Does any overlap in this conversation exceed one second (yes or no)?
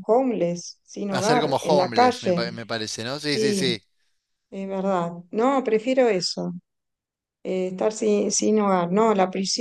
yes